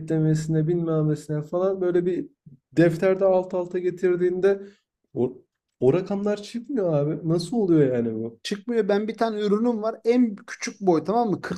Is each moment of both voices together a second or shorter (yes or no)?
yes